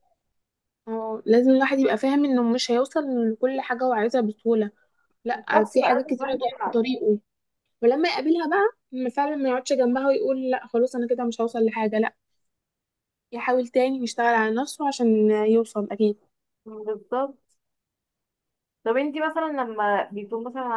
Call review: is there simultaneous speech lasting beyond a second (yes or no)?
yes